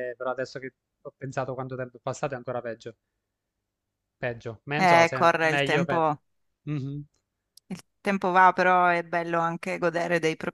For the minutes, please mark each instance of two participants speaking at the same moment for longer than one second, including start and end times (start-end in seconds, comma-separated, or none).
4.7-6.0